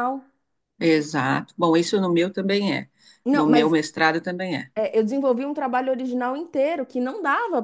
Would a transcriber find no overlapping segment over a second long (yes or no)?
yes